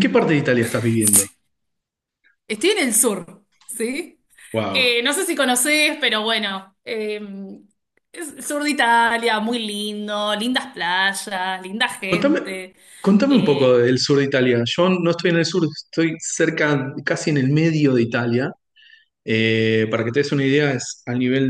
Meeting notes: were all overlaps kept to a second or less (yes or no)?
yes